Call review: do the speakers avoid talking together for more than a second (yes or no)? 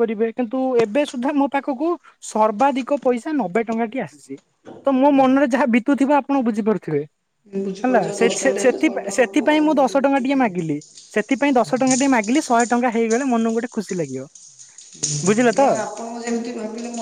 no